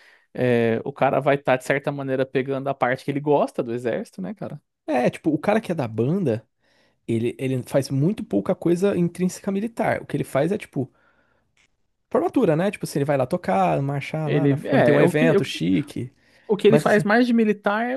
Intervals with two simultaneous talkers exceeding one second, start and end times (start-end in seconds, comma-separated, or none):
14.2-15.6